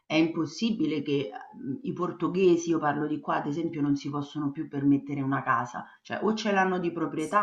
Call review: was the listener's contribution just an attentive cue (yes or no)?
yes